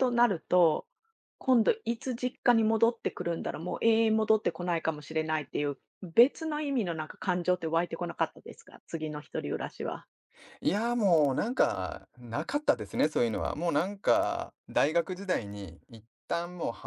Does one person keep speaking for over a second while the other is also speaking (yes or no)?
no